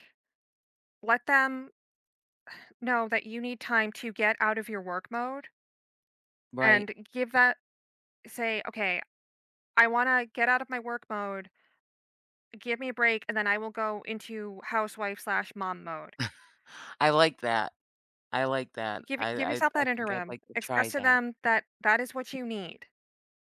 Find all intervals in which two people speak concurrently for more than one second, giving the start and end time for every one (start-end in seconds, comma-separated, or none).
19.1-21.2